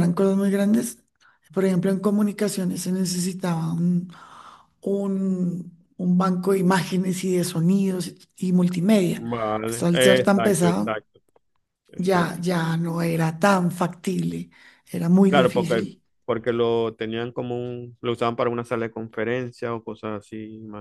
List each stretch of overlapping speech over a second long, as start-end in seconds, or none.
9.2-11.0